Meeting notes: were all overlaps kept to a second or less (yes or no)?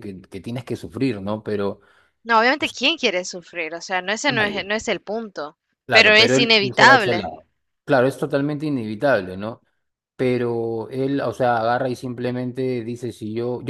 no